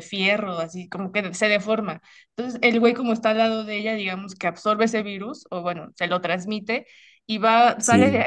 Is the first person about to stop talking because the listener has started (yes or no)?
no